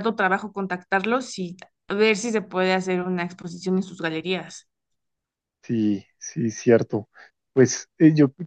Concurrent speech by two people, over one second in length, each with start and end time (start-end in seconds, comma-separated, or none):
none